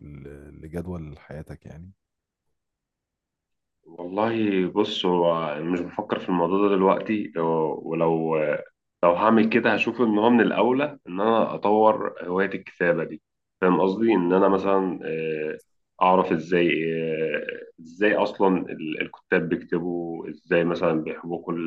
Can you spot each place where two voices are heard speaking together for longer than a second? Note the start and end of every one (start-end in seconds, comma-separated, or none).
none